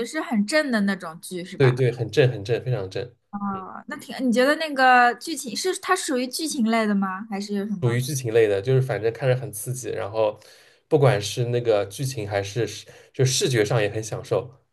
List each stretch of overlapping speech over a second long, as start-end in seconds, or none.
none